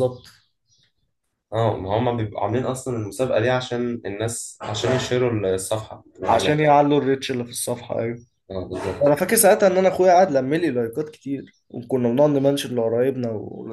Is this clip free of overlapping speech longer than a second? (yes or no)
yes